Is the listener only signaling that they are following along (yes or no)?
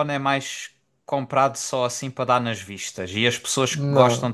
yes